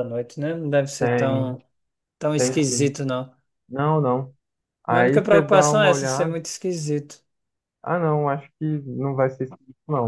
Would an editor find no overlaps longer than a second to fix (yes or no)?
no